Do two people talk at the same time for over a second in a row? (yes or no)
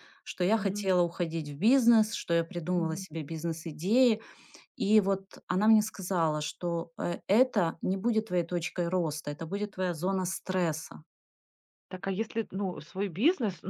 no